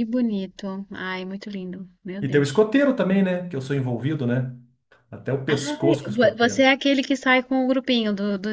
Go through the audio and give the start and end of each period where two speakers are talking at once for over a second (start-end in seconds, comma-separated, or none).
5.5-6.7